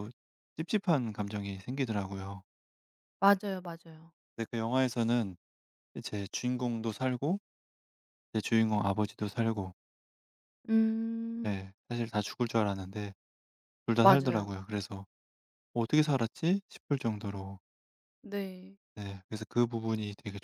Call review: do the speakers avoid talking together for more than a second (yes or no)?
yes